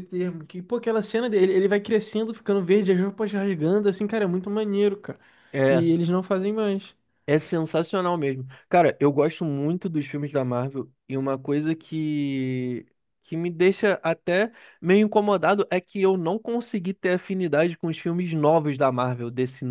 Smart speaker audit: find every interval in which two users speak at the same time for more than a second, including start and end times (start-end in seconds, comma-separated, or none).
none